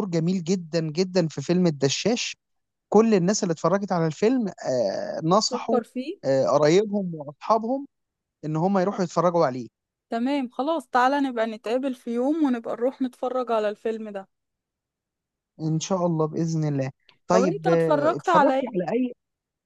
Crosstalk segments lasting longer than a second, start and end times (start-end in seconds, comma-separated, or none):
17.3-18.9